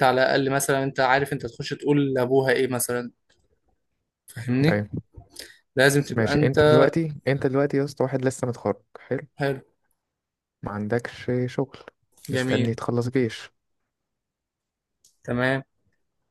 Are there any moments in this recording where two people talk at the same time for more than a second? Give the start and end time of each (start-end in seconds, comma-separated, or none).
none